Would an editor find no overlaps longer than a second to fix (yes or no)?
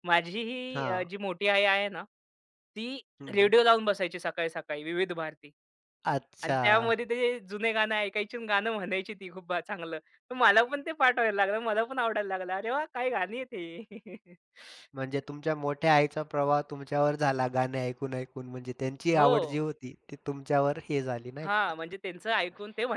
yes